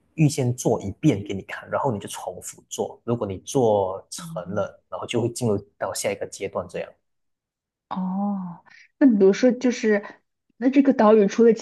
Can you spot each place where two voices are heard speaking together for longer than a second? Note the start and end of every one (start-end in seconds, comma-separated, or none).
none